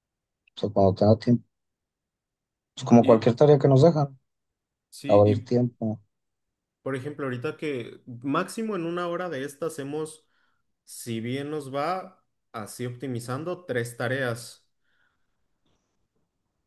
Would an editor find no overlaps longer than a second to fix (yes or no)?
yes